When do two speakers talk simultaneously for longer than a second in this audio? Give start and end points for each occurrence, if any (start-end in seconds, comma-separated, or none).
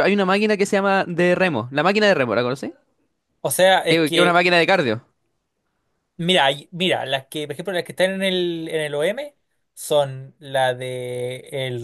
none